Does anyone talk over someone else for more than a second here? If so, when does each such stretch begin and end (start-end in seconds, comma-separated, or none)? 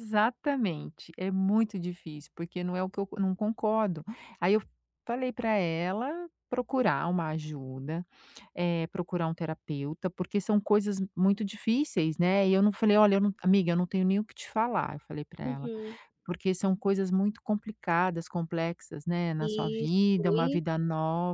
19.4-20.6